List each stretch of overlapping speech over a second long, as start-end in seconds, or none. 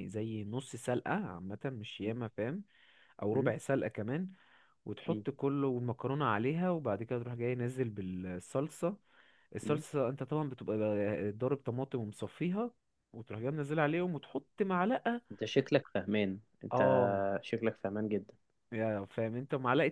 none